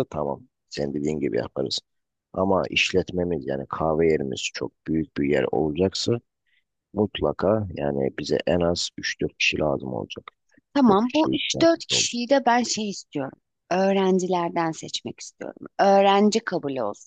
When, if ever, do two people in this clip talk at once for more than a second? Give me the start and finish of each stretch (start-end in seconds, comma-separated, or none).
10.9-12.1